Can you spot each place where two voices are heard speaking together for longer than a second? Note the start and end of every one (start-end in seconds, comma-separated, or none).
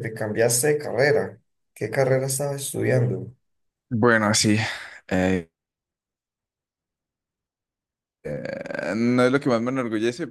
none